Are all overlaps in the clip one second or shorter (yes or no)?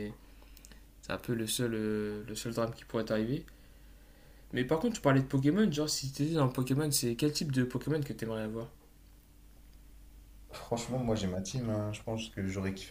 yes